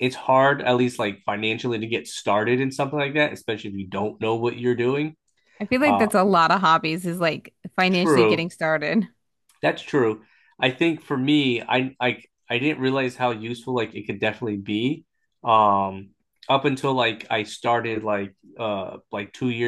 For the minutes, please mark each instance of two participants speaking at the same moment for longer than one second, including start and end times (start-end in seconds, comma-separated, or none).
none